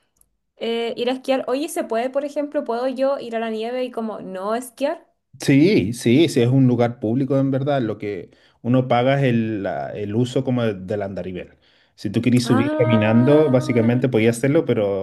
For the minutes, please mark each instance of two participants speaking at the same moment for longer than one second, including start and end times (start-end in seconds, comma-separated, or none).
12.4-13.9